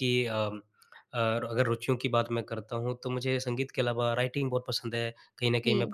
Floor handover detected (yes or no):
no